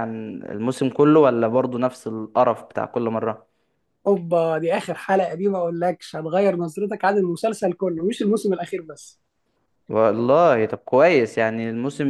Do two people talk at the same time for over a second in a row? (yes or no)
no